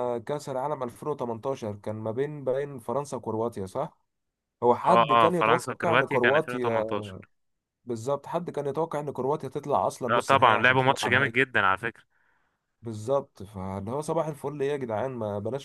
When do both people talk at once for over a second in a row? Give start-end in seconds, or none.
4.9-6.8, 10.1-11.4